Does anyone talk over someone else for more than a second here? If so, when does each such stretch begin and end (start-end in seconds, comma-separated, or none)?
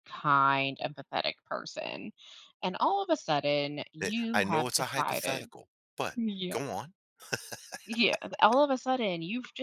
4.0-5.5